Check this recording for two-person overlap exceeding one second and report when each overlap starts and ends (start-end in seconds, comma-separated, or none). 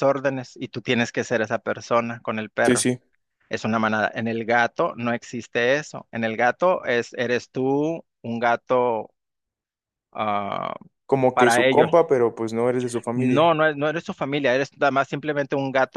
none